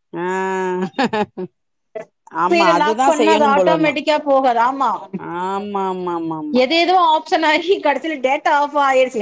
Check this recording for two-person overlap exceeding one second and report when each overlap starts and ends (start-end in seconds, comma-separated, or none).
2.5-3.9